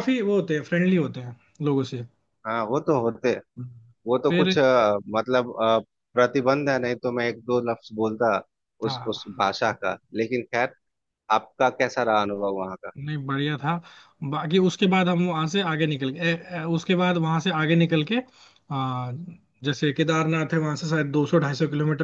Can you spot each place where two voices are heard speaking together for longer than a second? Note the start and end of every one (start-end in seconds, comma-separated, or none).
none